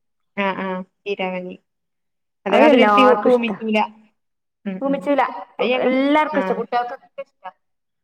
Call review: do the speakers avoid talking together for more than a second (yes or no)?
yes